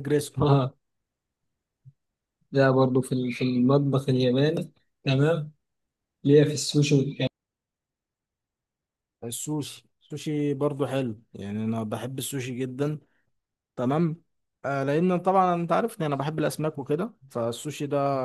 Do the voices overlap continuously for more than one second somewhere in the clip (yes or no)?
no